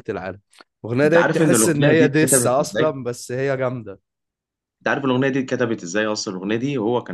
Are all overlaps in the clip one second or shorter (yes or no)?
no